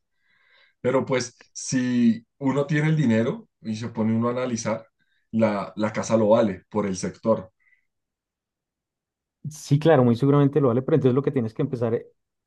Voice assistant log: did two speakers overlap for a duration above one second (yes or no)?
no